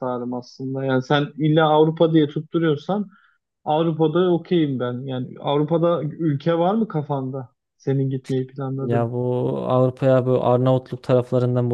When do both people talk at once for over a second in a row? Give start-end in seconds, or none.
none